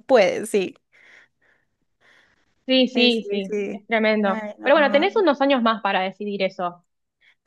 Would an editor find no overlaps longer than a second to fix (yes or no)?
no